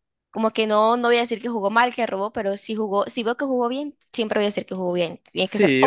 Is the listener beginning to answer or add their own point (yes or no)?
yes